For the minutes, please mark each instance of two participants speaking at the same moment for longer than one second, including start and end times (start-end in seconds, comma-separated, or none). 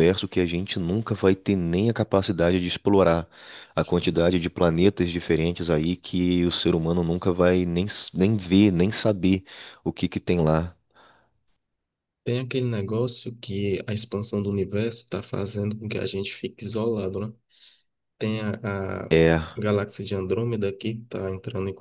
none